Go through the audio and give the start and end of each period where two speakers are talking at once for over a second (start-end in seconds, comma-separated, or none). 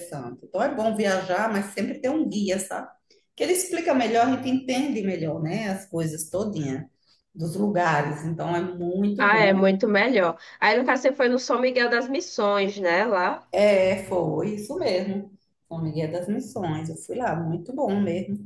none